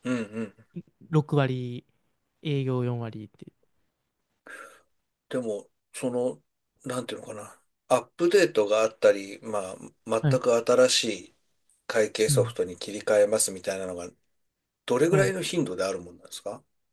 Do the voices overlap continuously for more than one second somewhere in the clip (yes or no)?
no